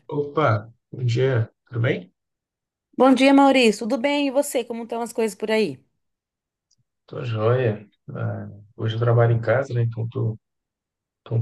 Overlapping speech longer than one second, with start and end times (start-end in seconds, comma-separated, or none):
none